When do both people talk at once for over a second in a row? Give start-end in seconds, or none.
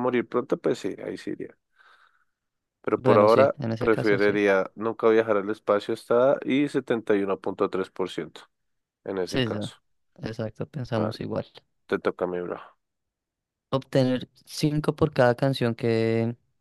3.0-4.4